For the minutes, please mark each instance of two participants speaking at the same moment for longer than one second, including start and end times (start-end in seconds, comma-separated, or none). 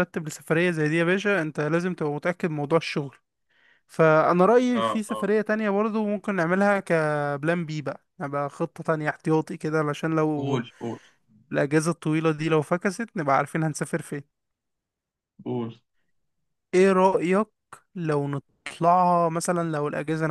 none